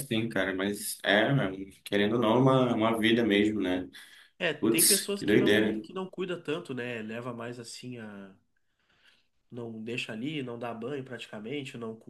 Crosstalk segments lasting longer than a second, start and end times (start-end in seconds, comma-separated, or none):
4.6-5.8